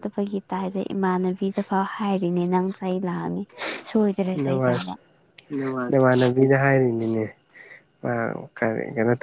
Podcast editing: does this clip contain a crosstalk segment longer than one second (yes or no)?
no